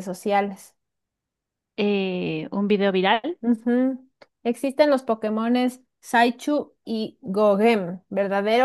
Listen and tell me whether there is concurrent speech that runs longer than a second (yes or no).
no